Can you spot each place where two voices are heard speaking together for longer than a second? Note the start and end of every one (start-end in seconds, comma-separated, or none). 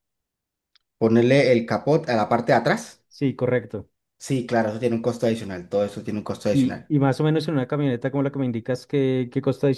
none